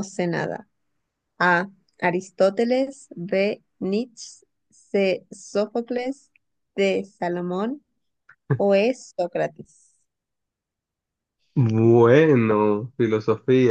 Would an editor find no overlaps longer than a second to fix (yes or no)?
yes